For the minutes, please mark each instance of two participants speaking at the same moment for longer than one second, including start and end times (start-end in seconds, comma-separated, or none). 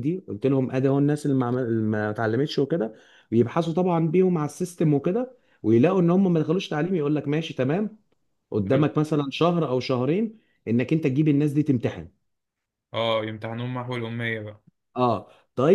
none